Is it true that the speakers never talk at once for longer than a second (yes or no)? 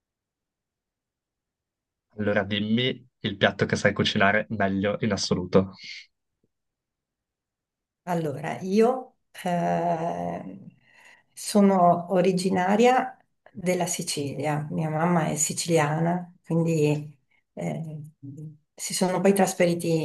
yes